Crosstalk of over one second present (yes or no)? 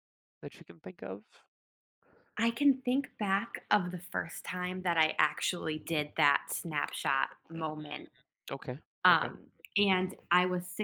no